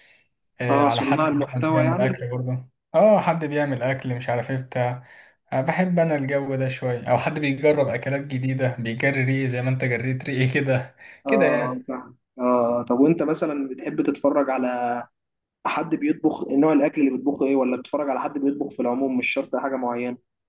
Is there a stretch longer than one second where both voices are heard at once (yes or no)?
yes